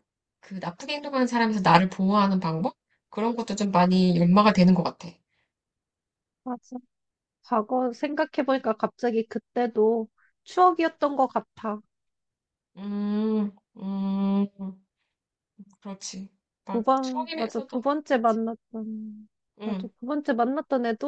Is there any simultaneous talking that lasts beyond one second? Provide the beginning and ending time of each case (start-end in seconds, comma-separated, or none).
16.7-18.4